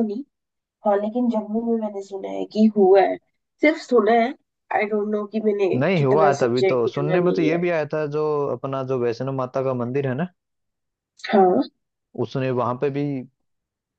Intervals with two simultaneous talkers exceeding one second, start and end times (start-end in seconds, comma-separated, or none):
5.7-7.6